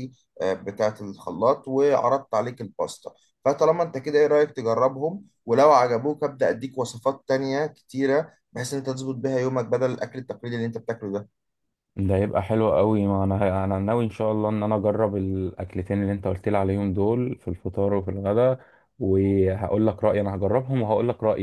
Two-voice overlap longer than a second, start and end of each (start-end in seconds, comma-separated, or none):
none